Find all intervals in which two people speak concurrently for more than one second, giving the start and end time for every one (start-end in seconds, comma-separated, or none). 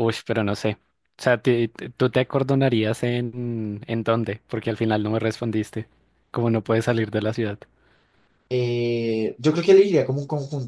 none